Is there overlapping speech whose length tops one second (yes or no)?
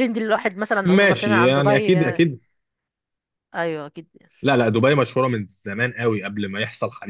yes